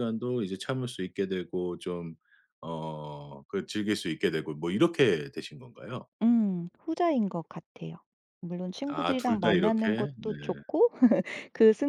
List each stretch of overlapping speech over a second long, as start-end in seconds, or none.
8.9-10.3